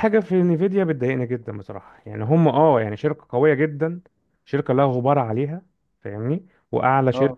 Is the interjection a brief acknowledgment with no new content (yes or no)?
yes